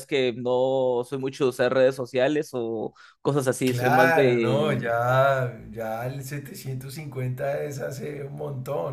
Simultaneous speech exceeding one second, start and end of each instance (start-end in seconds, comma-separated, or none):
3.6-4.9